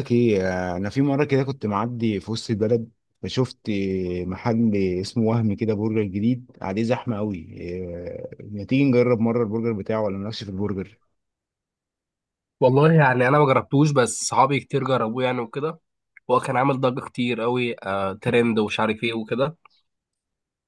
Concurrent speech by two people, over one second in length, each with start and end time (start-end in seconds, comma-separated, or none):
none